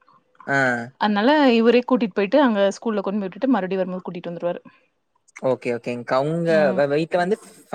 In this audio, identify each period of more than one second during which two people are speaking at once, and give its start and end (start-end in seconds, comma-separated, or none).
none